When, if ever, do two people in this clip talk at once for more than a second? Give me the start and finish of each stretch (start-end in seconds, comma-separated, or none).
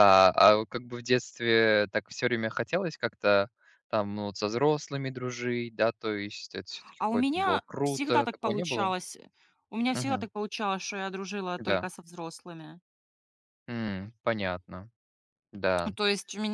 7.0-8.9